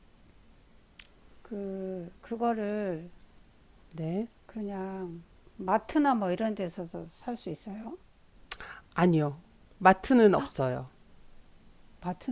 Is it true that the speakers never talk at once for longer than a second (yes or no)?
yes